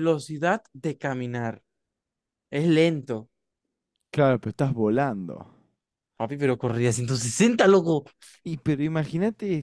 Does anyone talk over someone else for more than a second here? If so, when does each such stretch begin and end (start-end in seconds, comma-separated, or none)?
none